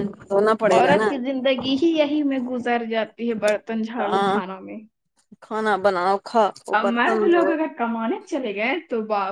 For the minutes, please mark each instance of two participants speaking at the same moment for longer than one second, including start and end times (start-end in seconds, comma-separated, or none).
none